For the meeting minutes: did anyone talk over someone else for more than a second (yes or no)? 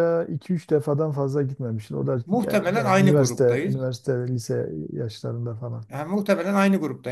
yes